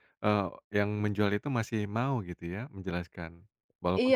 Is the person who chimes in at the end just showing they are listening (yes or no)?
no